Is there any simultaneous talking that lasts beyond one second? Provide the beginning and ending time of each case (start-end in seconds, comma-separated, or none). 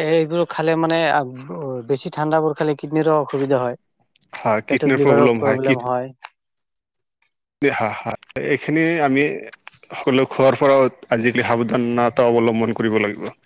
none